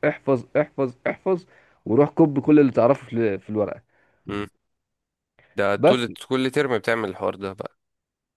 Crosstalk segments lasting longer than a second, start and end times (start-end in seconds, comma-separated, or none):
none